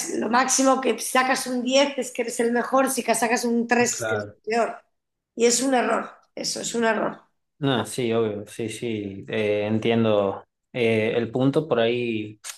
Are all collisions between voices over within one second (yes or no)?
yes